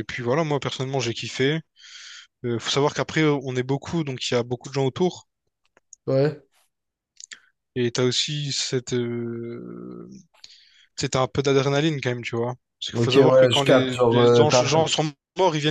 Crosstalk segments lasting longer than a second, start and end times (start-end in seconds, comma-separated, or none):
12.9-14.6